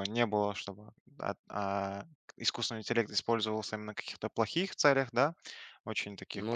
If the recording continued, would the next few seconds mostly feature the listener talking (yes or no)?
no